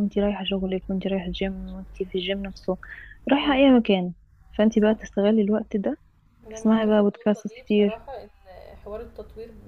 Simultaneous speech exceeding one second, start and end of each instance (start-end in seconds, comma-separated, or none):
6.5-8.0